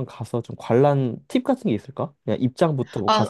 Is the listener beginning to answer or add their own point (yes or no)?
yes